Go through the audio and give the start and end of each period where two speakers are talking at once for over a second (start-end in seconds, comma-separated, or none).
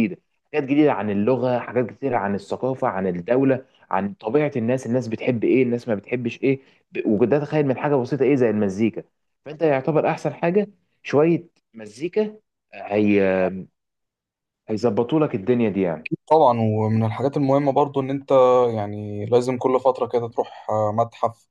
none